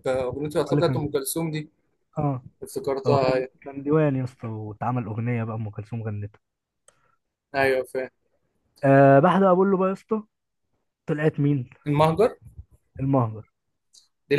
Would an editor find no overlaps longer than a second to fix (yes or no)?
yes